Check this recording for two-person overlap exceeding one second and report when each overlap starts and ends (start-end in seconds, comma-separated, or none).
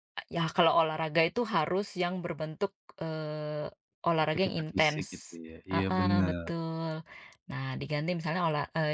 4.2-6.5